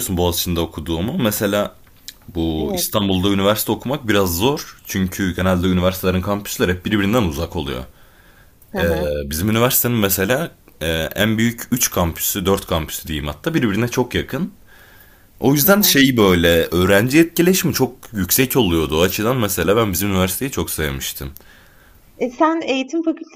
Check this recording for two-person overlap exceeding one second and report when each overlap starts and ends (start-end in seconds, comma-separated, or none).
none